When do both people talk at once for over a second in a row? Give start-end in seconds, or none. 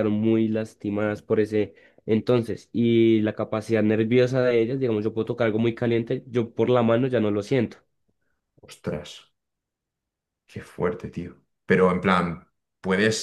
none